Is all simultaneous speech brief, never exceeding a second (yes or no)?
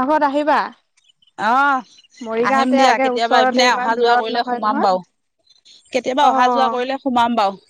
no